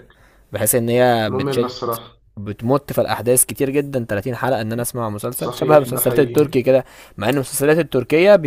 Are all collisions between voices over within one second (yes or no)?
no